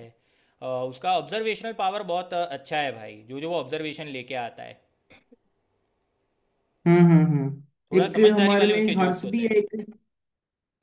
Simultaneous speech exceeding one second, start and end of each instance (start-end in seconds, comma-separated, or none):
8.0-9.5